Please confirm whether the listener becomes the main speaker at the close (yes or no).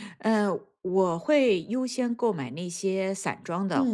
no